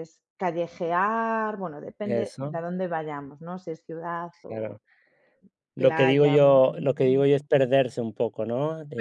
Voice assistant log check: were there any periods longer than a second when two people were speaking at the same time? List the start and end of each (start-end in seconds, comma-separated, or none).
5.8-7.3